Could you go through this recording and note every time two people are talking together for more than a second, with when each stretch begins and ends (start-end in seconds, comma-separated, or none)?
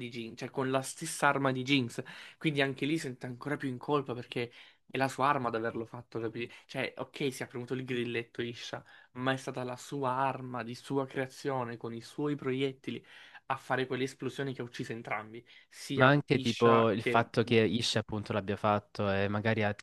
15.9-17.3